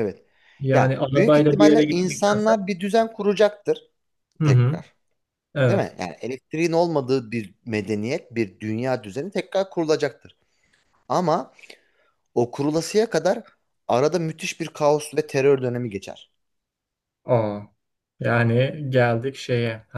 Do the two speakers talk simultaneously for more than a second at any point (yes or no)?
yes